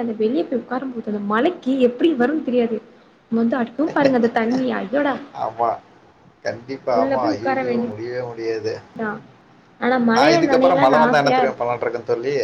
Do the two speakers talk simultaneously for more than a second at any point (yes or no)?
yes